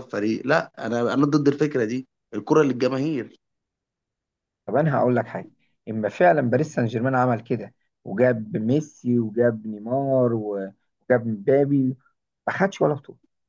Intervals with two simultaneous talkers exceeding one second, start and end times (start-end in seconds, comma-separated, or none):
none